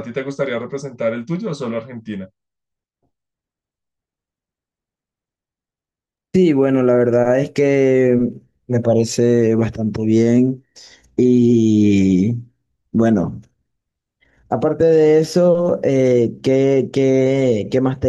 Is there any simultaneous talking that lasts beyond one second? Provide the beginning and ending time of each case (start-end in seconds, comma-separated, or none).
none